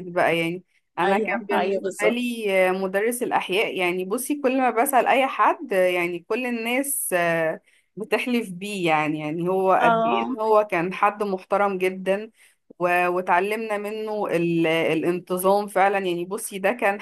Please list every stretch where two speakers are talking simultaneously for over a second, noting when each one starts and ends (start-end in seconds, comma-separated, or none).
1.1-2.2